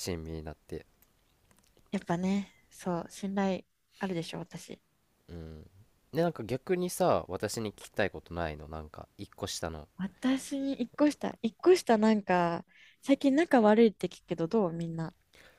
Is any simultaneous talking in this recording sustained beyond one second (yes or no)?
no